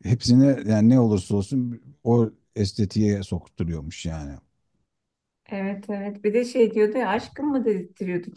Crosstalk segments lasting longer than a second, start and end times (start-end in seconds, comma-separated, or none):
none